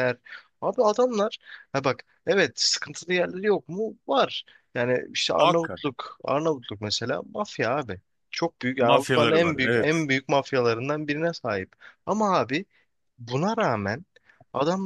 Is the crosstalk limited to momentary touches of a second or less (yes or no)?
no